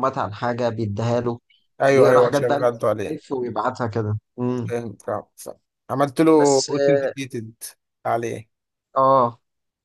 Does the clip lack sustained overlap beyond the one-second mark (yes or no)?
no